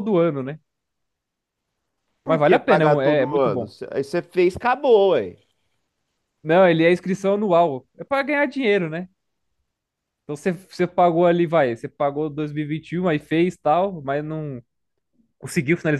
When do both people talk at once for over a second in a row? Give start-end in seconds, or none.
2.2-3.7